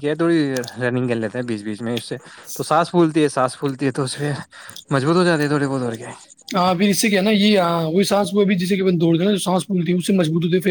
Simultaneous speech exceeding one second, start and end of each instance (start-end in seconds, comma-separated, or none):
none